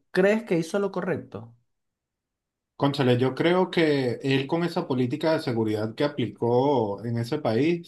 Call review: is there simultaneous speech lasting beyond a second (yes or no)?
no